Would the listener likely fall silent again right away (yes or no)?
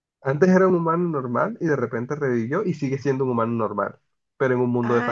no